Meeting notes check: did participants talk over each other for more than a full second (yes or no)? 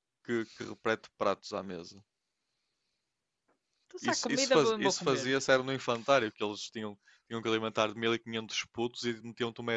yes